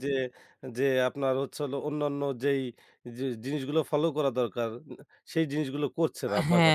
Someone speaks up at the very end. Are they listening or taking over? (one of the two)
taking over